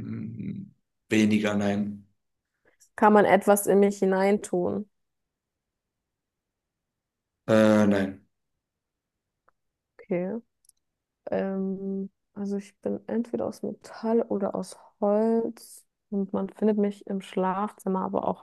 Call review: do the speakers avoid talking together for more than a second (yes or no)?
yes